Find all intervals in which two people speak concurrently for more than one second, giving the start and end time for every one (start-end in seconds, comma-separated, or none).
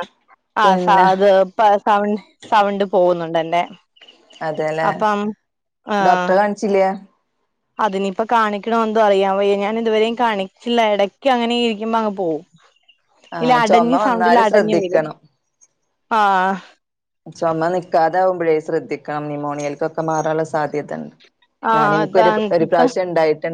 13.4-15.0